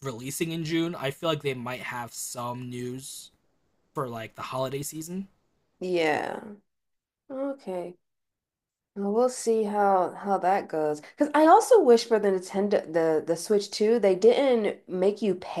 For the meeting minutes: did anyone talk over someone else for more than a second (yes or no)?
no